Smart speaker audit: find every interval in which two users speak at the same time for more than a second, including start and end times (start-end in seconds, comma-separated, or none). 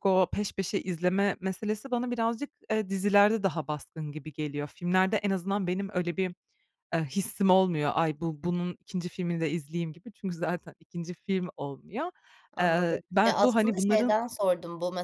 12.6-14.2